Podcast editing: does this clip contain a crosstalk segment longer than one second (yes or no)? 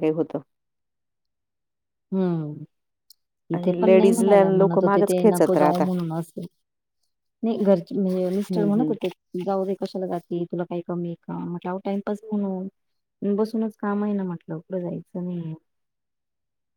yes